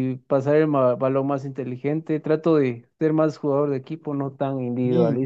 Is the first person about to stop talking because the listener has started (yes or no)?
yes